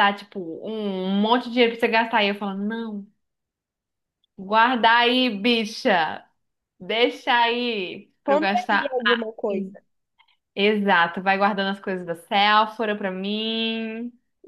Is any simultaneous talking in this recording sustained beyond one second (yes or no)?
yes